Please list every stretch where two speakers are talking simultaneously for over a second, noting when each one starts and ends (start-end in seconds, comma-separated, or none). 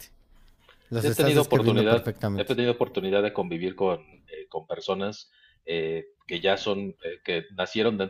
1.0-2.5